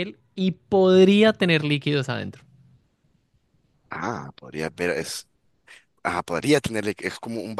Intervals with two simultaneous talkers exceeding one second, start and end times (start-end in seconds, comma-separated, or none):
none